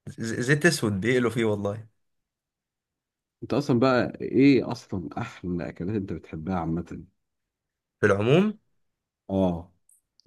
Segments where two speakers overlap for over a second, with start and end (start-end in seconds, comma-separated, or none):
none